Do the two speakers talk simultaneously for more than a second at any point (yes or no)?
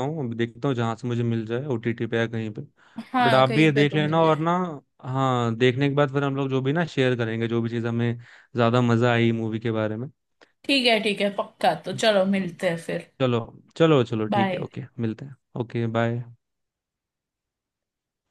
yes